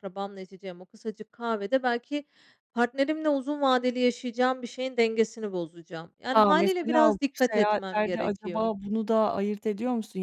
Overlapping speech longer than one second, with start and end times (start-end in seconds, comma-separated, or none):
6.3-8.7